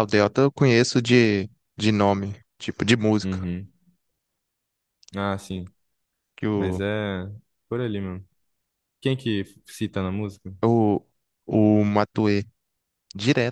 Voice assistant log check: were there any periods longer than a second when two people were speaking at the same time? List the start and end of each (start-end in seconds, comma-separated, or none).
none